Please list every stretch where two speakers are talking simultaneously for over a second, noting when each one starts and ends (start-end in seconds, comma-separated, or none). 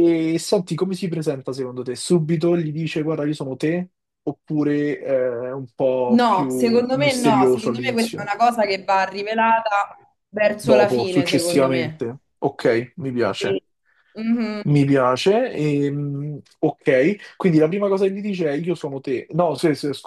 6.1-8.3, 10.6-12.1